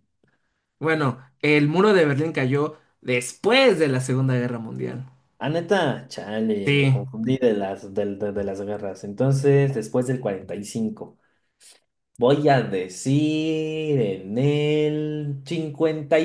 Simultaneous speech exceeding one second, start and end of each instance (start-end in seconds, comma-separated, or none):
none